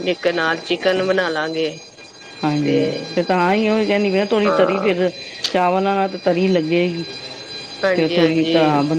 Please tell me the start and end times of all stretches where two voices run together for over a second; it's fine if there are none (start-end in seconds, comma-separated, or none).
none